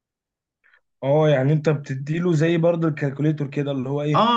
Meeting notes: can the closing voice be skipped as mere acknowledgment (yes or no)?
no